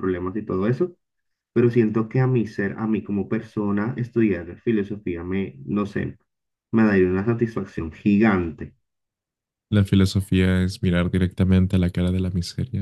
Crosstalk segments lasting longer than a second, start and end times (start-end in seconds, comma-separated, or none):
none